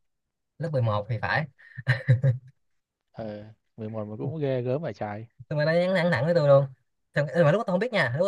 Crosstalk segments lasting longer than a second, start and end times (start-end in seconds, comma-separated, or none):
none